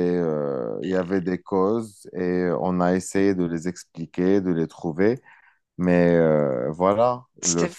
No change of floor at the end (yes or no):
yes